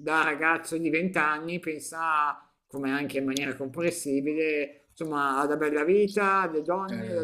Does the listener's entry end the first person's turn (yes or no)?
no